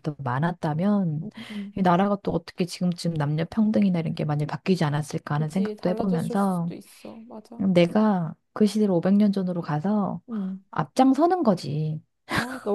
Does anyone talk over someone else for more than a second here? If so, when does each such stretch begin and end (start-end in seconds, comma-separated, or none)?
5.3-6.7